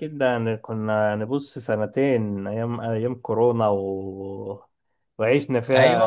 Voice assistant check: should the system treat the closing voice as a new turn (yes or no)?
no